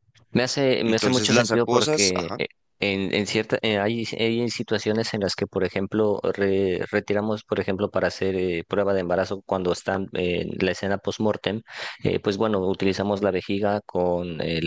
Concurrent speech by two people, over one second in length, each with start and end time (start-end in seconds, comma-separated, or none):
0.8-2.4